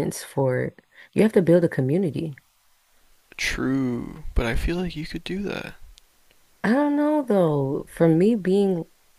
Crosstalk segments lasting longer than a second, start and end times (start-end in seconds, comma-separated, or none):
none